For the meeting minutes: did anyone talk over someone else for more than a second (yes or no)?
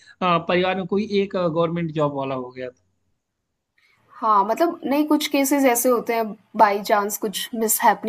no